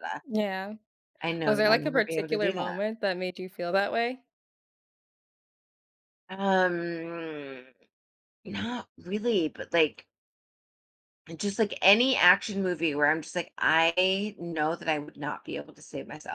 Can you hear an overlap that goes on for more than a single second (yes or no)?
yes